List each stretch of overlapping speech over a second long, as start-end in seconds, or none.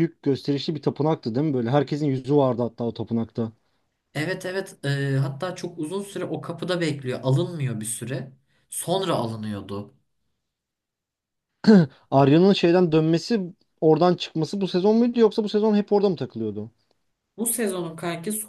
none